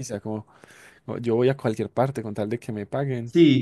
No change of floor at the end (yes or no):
no